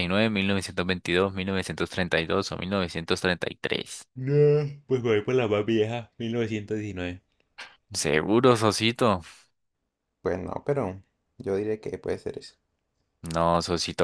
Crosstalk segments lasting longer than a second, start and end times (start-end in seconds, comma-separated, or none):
none